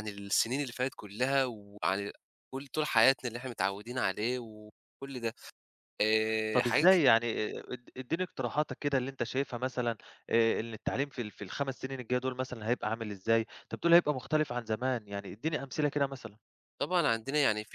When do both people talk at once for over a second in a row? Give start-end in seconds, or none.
none